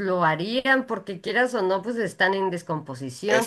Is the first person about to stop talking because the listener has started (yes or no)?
no